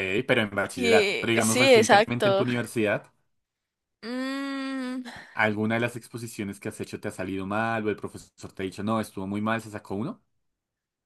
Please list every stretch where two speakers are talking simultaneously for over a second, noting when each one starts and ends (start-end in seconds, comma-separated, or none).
0.8-2.5